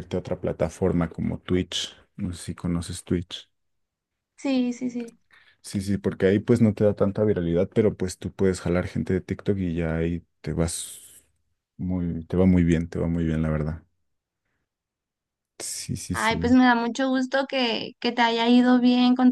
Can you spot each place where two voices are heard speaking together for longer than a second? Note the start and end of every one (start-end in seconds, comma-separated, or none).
none